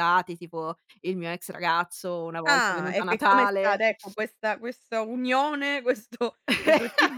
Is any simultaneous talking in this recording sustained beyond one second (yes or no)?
yes